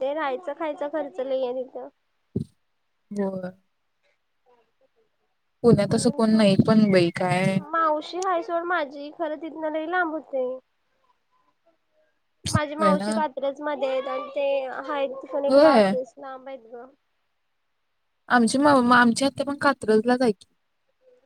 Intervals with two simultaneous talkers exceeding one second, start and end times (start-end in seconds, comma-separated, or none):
5.9-7.5